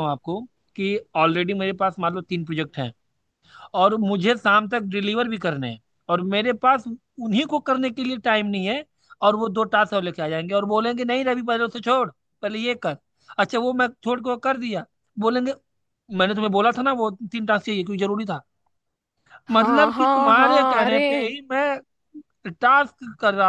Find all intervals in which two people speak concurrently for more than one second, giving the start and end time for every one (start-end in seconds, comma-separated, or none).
19.5-21.0